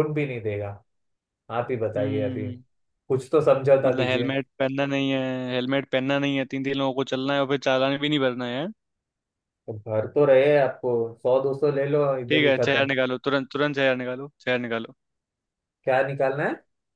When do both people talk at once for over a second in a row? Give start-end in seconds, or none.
none